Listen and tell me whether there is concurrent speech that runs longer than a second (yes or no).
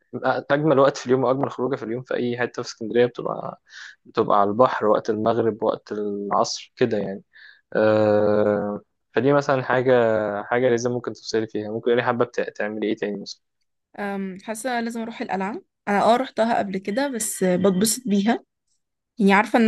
no